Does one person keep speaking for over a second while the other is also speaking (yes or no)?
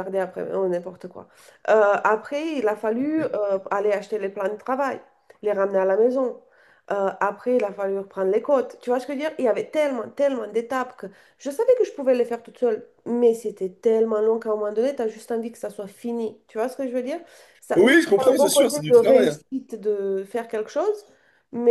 yes